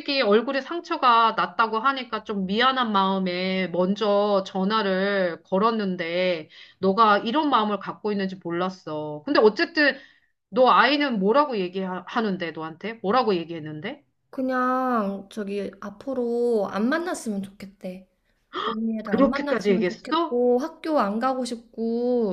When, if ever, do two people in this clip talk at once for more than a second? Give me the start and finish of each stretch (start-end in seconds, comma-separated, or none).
19.0-20.4